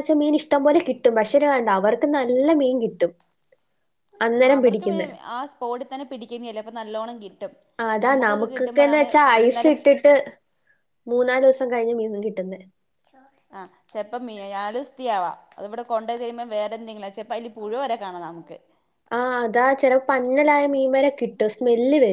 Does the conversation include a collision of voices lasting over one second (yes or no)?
yes